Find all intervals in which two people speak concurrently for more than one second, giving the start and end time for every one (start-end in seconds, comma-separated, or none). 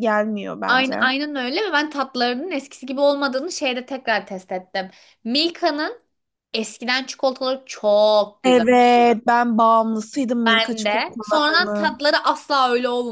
10.4-12.0